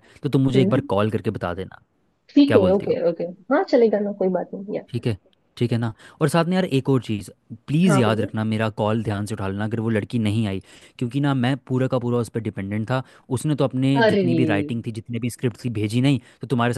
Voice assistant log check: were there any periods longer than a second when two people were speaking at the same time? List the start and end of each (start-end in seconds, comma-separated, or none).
none